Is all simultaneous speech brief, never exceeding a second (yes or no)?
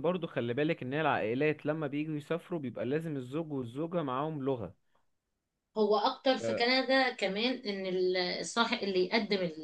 yes